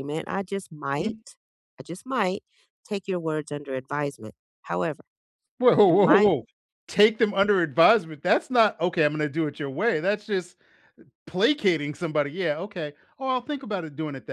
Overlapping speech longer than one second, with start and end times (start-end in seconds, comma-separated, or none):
none